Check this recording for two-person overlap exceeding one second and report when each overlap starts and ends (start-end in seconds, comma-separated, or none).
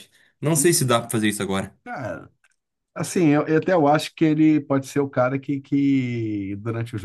none